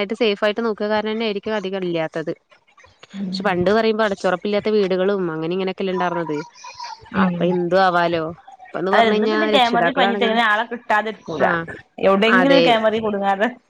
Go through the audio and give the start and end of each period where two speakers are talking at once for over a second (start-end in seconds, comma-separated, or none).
8.9-10.4